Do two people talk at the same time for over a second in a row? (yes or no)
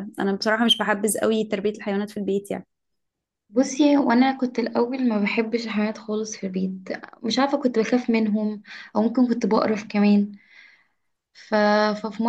no